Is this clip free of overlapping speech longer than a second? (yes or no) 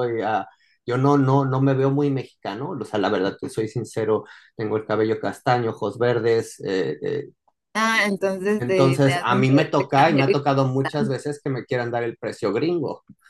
no